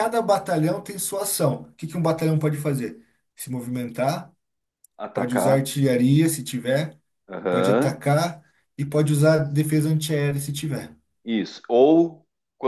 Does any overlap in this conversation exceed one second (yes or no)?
no